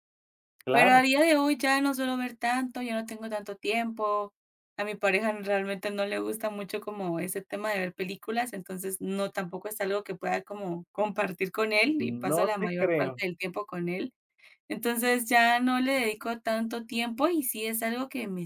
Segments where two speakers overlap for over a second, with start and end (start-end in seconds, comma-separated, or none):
12.0-13.2